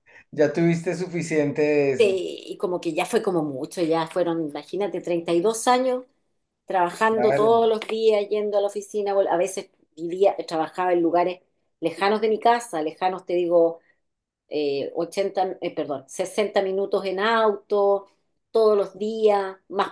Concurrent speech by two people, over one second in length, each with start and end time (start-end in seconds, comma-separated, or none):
none